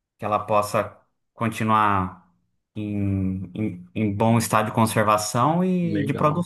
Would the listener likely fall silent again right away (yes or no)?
no